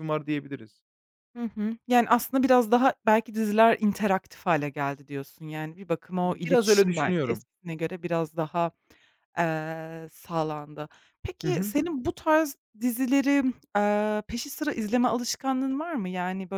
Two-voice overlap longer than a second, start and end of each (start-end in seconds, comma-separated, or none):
6.2-7.4